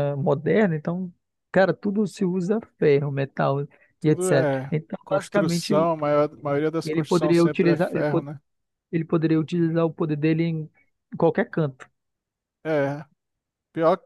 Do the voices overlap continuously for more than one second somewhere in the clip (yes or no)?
yes